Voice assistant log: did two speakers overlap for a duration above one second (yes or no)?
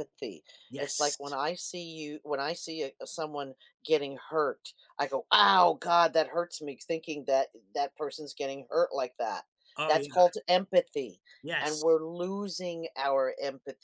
no